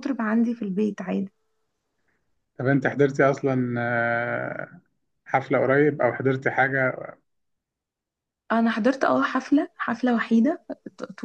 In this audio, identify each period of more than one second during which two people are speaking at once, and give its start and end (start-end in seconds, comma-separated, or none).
none